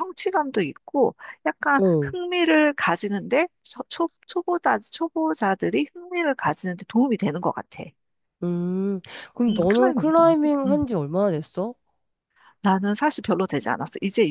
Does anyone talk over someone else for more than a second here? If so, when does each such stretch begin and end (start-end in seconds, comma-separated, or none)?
9.5-10.8